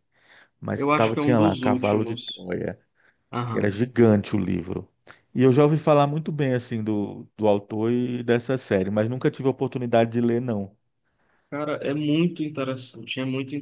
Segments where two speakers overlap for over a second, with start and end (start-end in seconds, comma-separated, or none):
0.8-2.5